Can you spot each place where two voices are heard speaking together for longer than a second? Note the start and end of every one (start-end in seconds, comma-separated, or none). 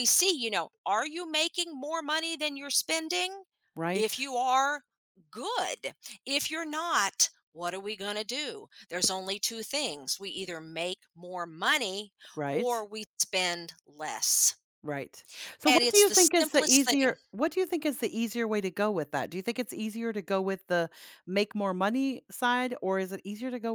15.7-17.1